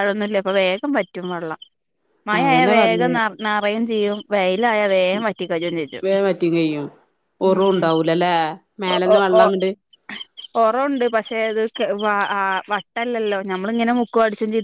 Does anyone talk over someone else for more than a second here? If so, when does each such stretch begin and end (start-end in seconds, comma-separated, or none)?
none